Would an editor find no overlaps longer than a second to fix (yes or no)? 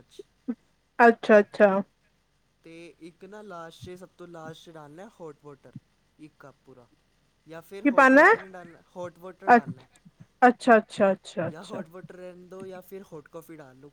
yes